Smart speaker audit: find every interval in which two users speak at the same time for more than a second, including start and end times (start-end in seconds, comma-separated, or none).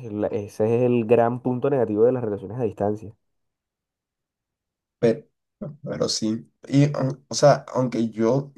none